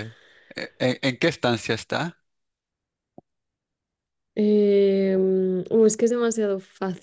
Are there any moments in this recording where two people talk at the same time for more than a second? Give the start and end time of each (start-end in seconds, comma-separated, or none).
none